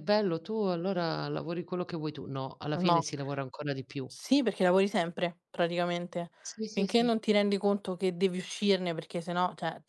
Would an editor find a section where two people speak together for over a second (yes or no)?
no